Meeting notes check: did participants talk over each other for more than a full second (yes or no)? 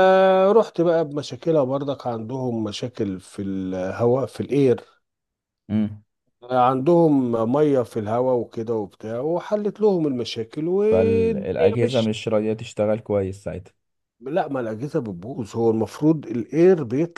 yes